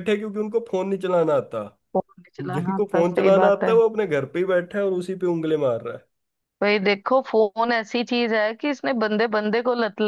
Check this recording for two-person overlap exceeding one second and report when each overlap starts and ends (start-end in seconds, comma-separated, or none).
2.4-3.7